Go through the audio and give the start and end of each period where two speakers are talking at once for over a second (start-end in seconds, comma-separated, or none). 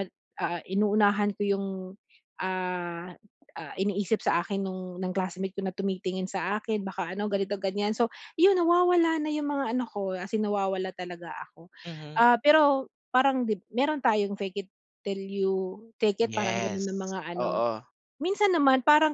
16.2-17.6